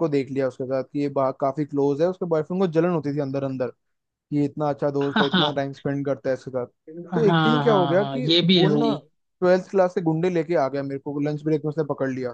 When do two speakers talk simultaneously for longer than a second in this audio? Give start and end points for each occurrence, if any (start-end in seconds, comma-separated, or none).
7.1-8.9